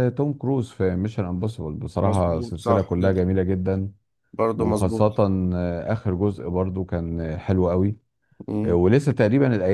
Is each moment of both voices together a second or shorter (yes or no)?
no